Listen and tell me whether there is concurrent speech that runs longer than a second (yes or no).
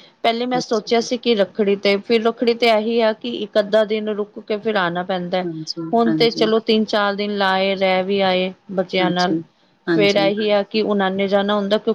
no